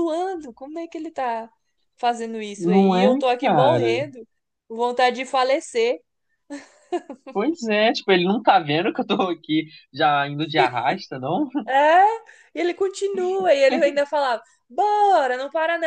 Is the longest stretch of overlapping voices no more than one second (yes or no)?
no